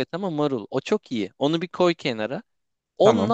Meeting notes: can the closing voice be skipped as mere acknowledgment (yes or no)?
yes